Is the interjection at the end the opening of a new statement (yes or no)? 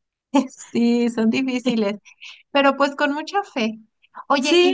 no